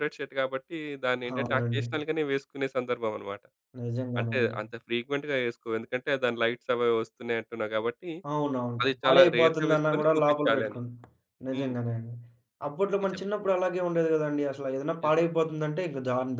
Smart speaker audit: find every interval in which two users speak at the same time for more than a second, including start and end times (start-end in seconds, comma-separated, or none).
8.8-10.8